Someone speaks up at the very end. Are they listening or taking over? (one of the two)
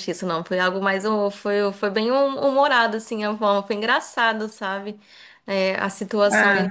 listening